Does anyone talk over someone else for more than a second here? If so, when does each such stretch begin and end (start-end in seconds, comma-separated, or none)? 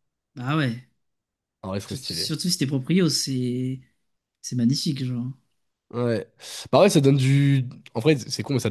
none